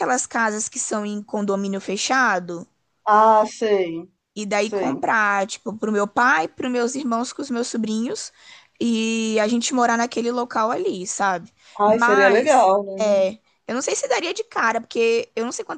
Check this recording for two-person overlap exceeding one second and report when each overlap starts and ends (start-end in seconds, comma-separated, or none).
11.8-13.3